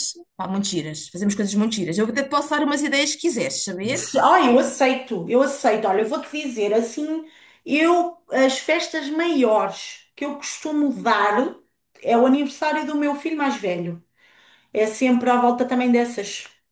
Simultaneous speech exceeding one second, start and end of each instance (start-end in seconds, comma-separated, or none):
none